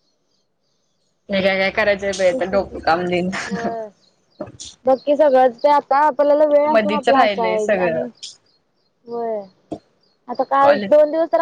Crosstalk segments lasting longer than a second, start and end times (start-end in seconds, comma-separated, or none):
6.7-8.0